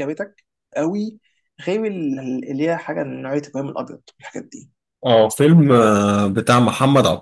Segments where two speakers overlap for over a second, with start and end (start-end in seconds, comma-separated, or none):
none